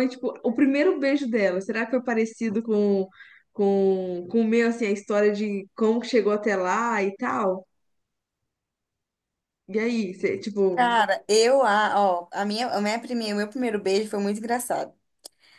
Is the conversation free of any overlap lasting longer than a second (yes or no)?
yes